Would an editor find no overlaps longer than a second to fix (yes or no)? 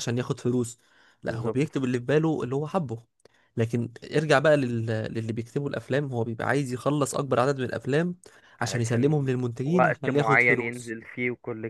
no